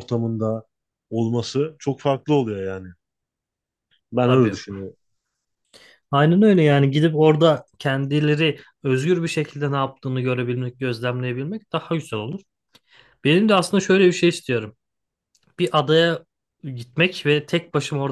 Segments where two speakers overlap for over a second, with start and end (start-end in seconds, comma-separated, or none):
none